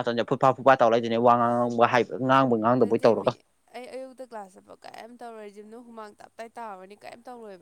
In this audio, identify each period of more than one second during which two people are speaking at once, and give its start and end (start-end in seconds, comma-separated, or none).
none